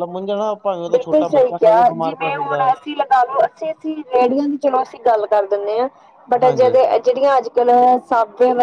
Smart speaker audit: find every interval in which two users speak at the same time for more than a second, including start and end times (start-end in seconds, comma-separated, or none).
none